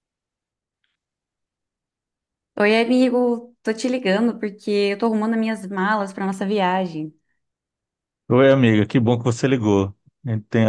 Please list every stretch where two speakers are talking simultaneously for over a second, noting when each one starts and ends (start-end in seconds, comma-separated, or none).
none